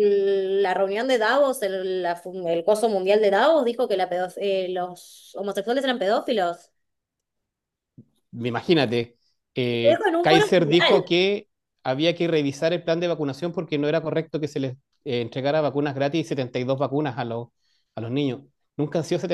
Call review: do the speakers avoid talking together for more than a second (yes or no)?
no